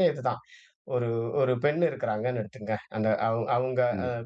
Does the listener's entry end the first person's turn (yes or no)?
no